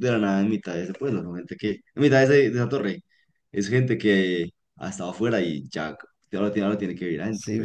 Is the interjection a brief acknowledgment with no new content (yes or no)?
no